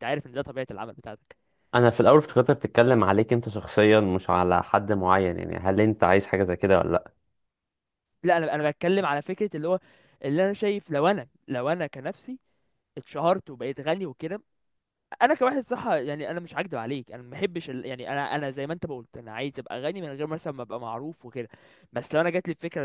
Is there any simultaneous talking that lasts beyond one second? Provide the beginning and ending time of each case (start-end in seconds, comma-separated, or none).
none